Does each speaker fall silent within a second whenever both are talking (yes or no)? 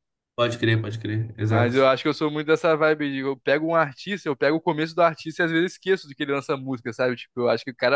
yes